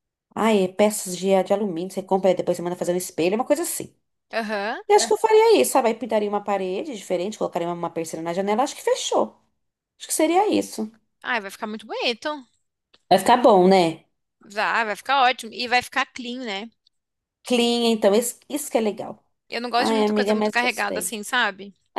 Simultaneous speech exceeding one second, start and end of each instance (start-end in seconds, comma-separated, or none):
19.8-21.1